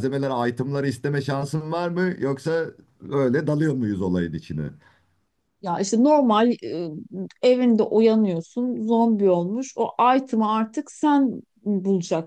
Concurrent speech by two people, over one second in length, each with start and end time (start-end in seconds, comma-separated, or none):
none